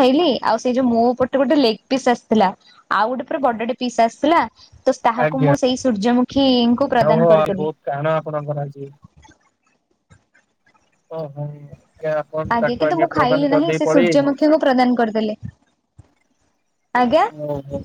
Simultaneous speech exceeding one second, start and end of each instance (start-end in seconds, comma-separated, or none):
12.8-14.4